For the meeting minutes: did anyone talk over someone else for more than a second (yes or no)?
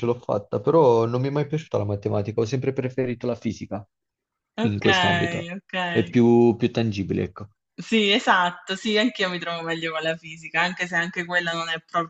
no